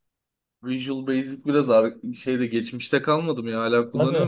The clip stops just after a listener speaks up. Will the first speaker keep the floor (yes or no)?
no